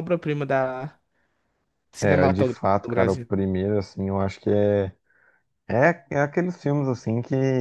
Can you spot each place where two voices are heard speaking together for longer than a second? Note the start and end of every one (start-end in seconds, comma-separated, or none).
2.0-3.3